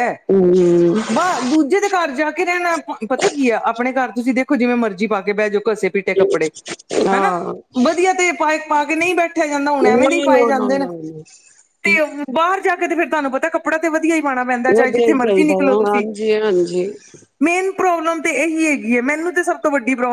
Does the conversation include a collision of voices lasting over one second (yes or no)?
no